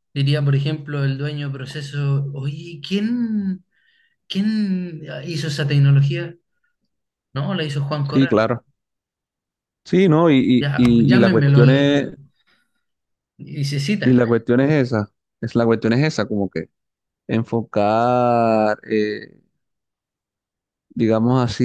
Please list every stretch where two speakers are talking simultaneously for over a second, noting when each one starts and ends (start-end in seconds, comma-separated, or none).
10.6-11.9